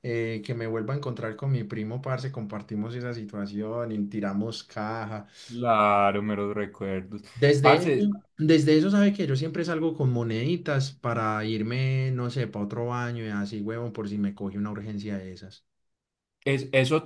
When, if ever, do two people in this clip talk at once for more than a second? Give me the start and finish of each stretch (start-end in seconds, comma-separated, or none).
none